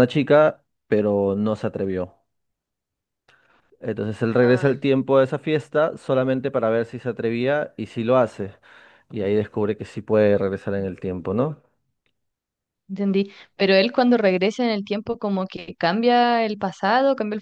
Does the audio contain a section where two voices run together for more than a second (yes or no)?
no